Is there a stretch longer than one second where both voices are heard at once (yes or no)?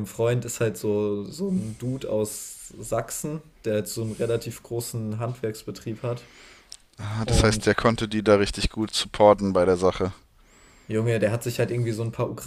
no